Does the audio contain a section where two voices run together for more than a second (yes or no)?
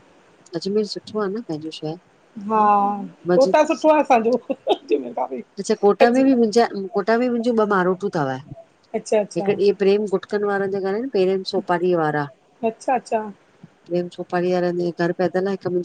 no